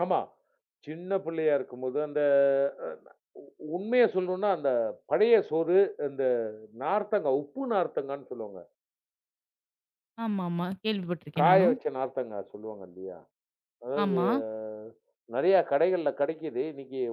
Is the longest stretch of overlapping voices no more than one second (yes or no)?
yes